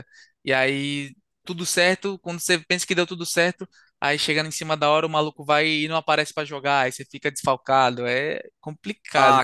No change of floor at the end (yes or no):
no